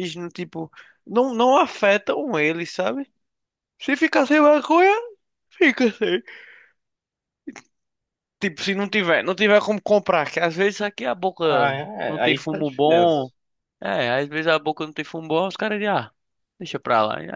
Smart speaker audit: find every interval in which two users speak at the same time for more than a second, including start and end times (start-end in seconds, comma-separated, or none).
11.5-13.3